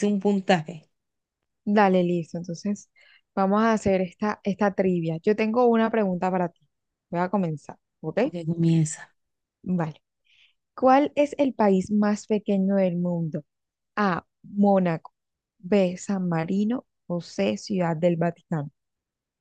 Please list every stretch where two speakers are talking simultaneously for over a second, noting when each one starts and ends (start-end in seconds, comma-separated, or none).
none